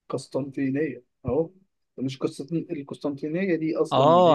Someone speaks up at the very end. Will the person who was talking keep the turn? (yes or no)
no